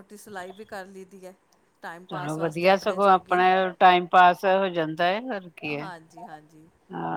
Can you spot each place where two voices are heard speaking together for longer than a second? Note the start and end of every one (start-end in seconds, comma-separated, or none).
2.1-3.5